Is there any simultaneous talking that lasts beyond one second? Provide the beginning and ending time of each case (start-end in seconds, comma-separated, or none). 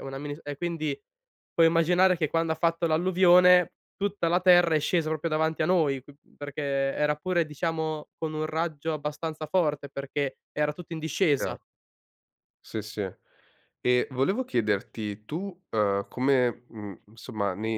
none